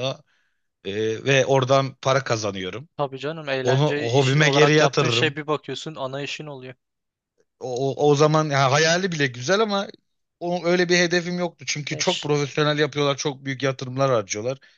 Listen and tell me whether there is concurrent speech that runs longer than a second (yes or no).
yes